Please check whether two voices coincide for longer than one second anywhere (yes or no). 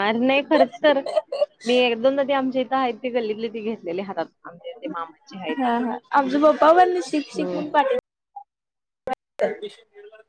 no